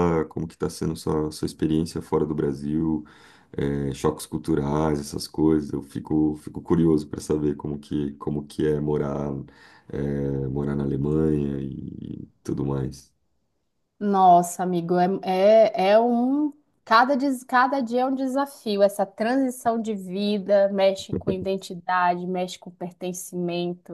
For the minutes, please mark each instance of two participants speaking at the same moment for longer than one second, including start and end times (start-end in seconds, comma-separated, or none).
none